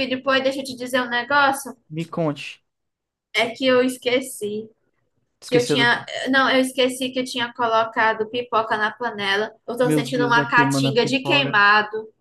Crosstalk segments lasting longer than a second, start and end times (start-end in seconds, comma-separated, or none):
9.8-11.6